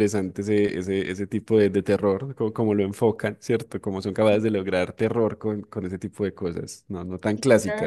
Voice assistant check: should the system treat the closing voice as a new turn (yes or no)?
yes